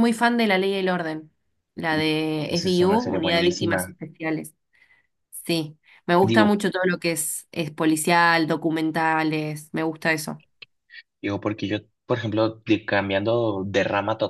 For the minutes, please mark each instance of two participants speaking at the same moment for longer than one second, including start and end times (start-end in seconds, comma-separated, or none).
2.4-4.0